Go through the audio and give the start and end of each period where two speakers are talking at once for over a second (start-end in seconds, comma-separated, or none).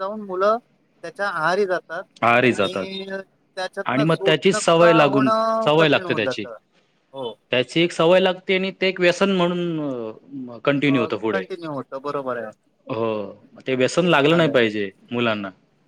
3.9-6.4